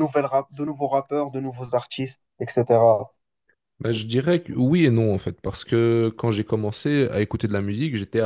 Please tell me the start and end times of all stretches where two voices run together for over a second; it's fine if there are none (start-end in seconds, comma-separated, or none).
none